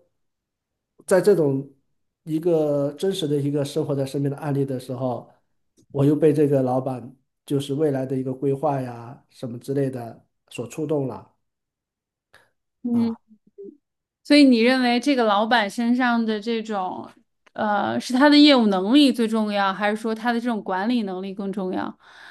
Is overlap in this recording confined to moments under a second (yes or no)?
yes